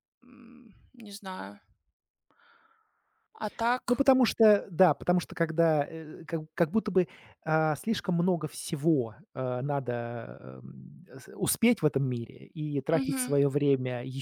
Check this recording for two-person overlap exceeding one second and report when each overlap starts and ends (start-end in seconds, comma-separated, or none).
none